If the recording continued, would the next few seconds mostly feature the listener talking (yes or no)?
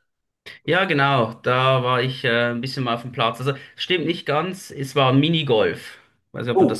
yes